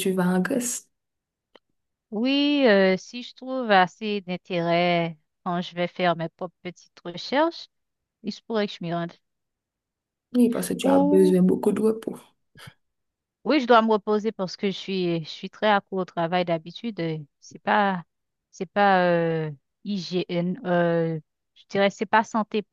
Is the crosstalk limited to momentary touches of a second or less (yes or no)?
yes